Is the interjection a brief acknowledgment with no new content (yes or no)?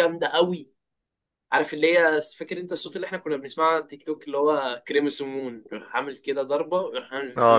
no